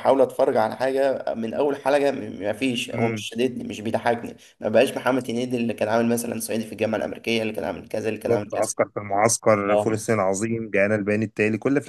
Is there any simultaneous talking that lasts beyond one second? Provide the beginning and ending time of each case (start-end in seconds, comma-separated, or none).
none